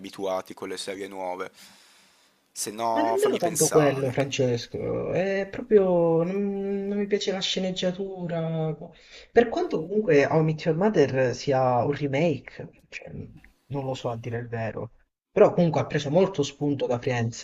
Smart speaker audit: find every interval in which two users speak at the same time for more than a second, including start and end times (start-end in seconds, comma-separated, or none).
3.0-4.2